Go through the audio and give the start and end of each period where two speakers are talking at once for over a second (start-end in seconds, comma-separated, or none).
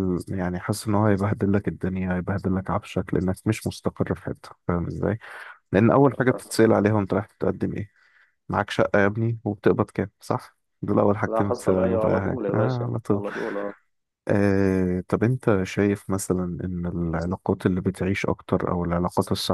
11.3-13.3